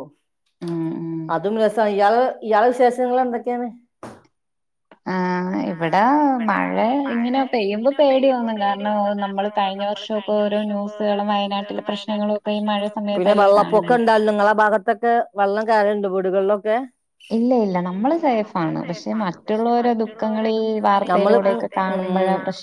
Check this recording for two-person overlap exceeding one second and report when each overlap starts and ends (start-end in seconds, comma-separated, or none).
8.1-13.9